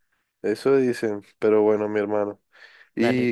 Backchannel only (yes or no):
yes